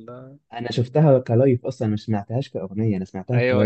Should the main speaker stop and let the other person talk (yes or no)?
yes